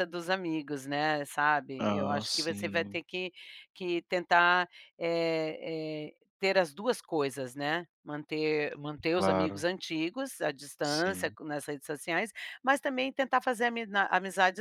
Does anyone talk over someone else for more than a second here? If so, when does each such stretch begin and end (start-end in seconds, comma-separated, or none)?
1.8-3.0